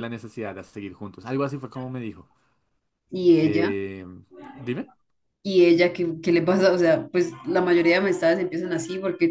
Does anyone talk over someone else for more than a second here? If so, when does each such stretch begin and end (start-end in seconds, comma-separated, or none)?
none